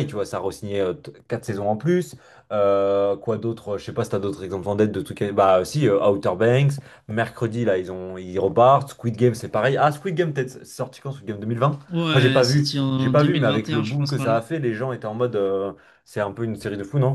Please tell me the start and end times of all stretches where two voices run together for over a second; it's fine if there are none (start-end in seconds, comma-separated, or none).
11.9-14.4